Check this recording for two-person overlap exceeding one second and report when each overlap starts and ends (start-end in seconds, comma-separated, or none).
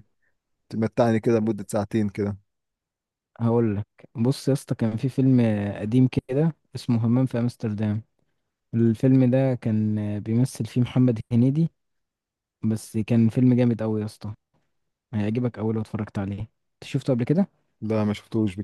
none